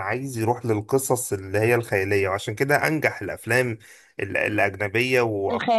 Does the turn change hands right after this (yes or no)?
no